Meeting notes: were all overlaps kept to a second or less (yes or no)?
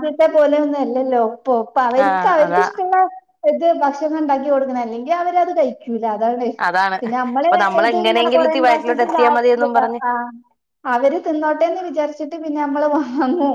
no